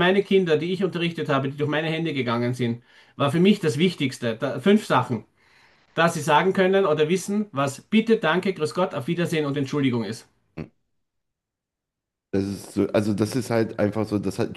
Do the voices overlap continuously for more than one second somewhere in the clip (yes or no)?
no